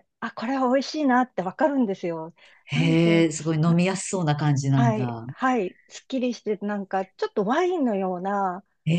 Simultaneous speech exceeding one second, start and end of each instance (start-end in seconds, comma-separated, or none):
none